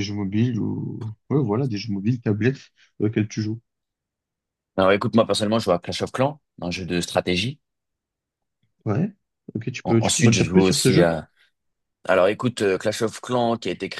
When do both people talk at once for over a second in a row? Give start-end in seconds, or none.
9.8-11.1